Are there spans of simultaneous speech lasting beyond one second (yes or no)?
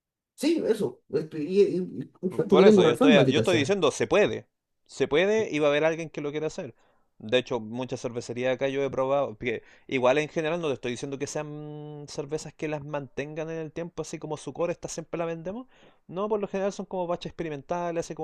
yes